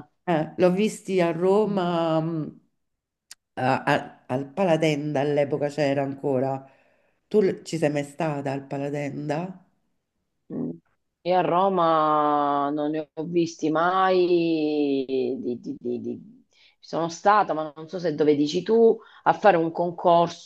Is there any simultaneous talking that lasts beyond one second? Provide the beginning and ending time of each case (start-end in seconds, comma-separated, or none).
none